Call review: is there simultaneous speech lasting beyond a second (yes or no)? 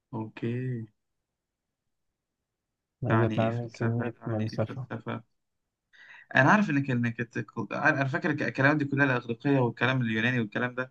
yes